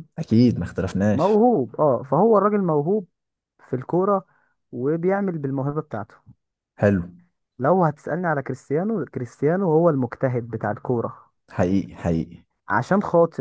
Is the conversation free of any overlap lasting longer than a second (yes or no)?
yes